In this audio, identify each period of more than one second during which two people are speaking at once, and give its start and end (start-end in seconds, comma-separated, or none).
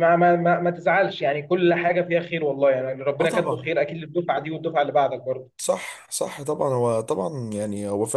none